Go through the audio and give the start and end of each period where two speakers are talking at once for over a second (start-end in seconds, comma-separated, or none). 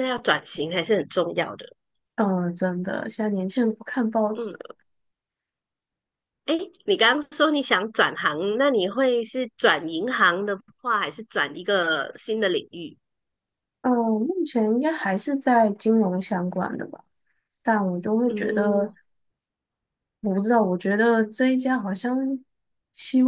none